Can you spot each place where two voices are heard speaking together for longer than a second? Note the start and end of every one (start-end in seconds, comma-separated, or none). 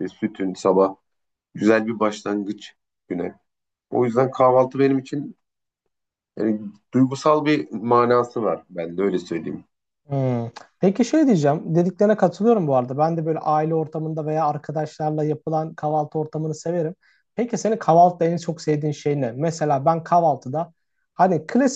none